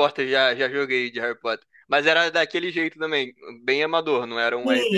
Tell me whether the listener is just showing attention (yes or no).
no